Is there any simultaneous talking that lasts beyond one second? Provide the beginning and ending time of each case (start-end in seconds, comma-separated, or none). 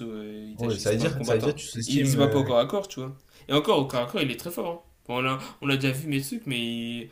0.6-2.5